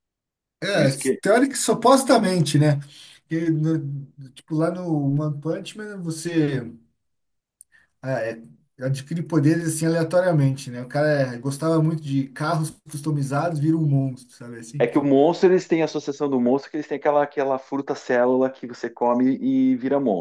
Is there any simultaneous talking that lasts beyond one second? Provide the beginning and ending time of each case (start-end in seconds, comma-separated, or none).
none